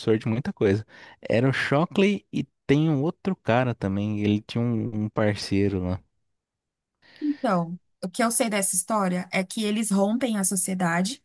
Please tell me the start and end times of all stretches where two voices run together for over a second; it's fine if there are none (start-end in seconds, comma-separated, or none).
none